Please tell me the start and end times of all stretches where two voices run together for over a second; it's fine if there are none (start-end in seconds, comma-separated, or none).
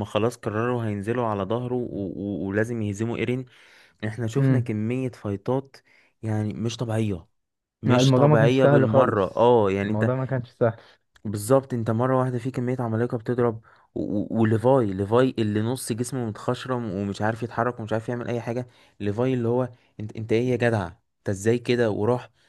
7.9-10.1